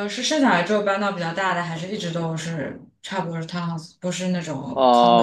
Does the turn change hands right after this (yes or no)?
yes